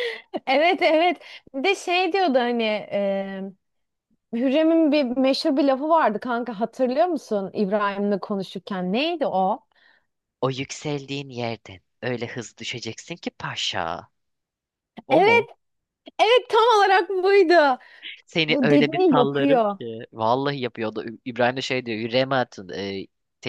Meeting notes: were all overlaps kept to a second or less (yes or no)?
no